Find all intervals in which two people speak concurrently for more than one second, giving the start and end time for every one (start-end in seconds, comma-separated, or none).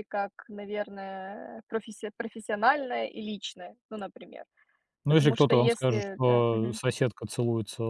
5.1-6.8